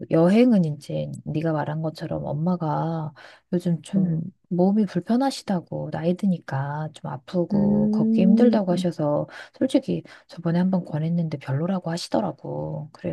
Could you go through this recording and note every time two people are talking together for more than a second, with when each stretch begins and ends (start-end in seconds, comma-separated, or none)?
7.5-8.9